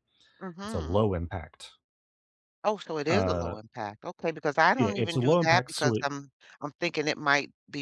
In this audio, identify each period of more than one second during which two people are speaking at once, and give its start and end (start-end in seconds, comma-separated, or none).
4.8-6.1